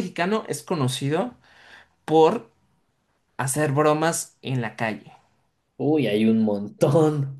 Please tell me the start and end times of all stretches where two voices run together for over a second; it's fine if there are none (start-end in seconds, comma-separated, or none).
none